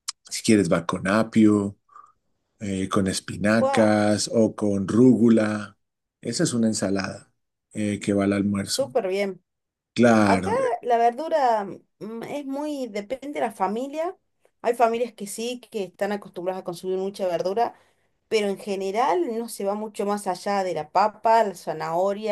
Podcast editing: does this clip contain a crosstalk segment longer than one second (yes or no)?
no